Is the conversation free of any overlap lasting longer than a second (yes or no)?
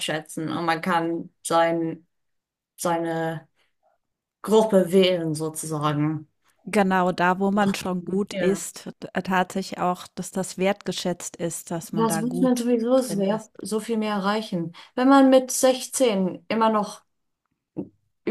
no